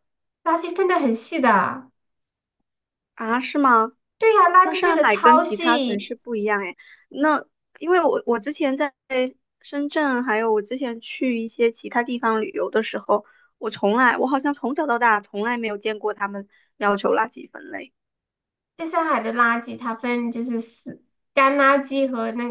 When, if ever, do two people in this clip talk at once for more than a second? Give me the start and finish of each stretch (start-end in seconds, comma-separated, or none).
4.6-6.1